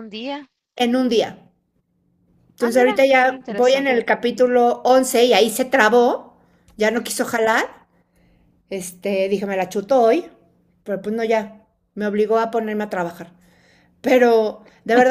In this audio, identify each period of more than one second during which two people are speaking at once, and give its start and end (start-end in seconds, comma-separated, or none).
2.6-4.1